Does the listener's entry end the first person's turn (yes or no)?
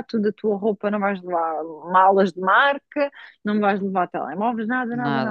no